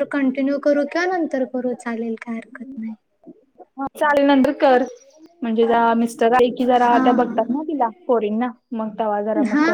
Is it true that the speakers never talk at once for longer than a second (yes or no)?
yes